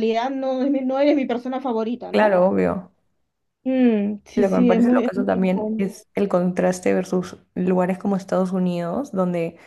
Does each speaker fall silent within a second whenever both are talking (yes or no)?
no